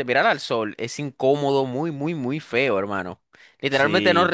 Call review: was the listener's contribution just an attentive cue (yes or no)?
yes